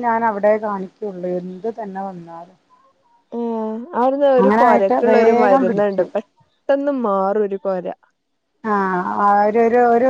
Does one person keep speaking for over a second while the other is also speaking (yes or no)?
yes